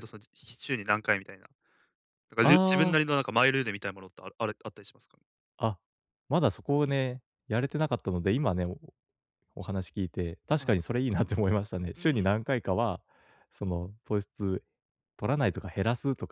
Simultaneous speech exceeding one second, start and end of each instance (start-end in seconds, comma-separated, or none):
none